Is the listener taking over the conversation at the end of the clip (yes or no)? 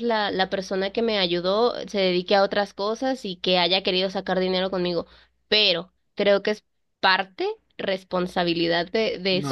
yes